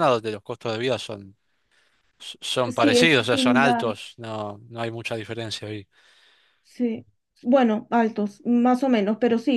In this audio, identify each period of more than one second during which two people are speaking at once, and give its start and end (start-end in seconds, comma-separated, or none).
2.7-3.9